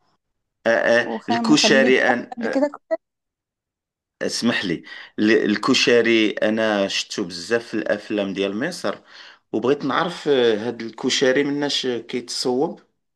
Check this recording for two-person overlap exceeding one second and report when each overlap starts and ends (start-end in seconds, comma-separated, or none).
1.0-2.7